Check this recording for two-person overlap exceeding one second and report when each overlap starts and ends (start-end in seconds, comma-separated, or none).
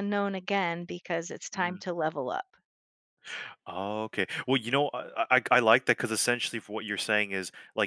none